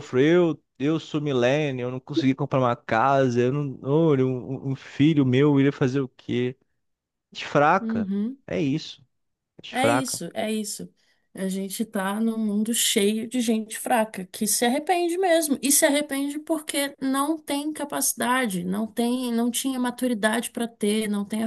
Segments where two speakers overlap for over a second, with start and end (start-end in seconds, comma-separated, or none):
none